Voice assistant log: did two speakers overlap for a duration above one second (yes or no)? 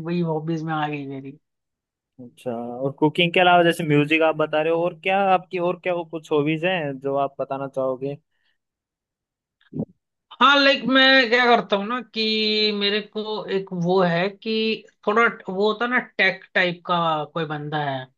no